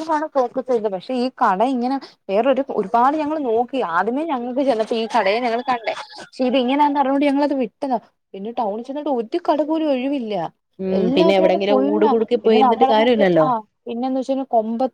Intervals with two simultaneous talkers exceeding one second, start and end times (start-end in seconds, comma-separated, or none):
11.0-13.5